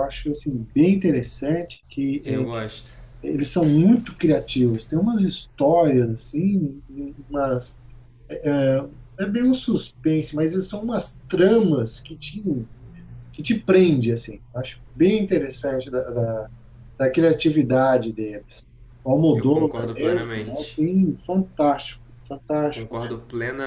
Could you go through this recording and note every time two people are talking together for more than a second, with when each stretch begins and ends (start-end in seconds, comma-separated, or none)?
19.3-20.8